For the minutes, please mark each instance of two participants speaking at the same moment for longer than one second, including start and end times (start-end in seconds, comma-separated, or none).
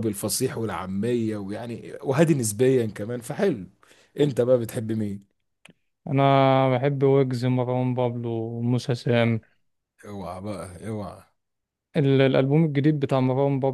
none